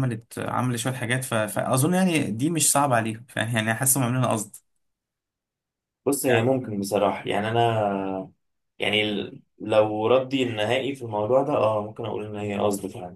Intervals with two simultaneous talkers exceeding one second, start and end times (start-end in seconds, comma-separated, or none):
none